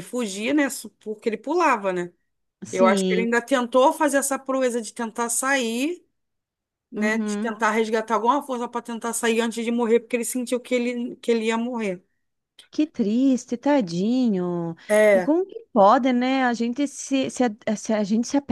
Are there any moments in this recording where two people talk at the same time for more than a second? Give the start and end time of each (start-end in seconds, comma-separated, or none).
none